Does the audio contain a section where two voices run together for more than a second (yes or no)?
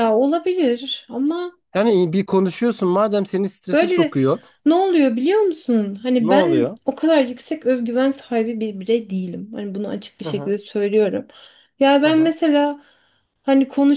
no